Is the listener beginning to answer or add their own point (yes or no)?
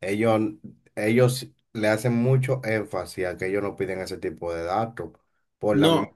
no